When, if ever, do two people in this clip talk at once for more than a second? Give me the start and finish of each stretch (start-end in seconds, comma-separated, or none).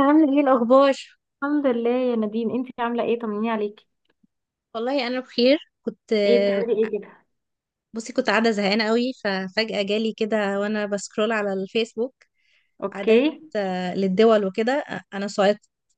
none